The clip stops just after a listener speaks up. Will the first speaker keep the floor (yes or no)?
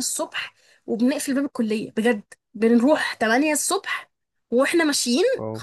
yes